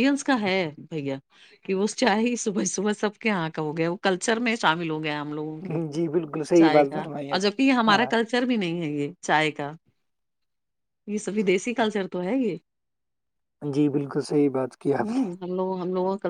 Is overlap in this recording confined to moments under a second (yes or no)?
no